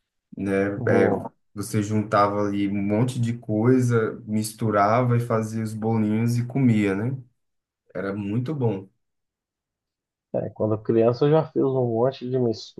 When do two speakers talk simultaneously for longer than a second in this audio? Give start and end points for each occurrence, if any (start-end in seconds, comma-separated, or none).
none